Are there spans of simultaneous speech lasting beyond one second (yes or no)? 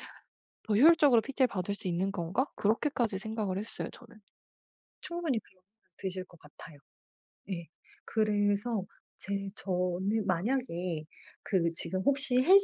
no